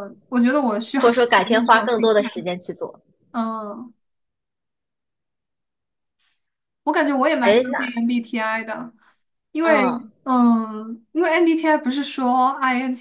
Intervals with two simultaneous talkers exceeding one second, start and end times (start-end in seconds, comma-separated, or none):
1.0-2.5